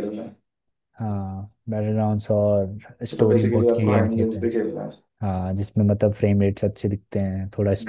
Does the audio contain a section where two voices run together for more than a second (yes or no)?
yes